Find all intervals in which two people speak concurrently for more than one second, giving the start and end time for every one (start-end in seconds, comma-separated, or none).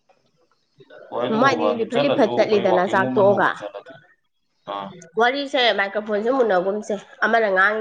1.3-3.5